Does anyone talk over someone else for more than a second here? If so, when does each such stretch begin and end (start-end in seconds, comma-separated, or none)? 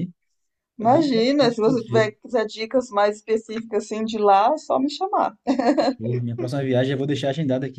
0.8-2.1